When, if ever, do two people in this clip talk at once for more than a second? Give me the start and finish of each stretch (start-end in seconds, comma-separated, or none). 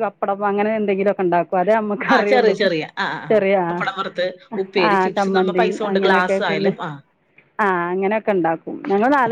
4.9-6.7